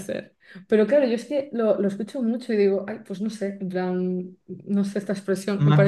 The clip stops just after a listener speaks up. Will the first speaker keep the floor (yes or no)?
no